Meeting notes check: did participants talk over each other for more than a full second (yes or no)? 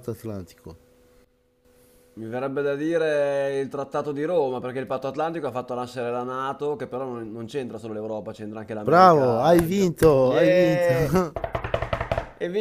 yes